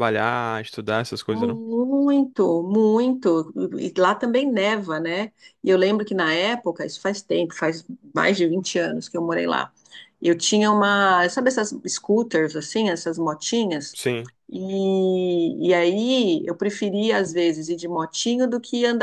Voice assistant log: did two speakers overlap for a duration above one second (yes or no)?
no